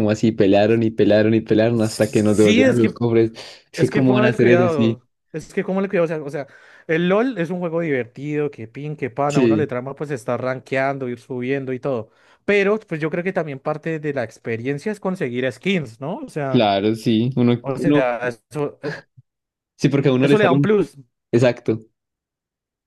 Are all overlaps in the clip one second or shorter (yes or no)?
no